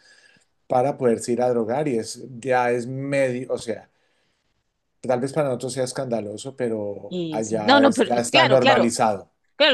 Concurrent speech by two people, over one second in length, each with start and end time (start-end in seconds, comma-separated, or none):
7.1-8.9